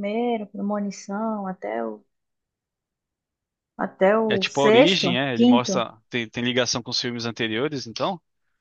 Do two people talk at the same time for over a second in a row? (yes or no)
yes